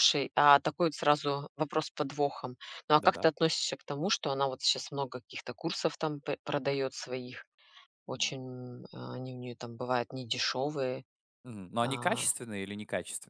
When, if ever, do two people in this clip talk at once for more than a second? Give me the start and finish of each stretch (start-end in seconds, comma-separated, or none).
none